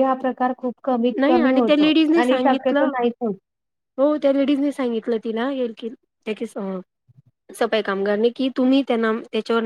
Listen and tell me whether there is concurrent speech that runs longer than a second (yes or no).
yes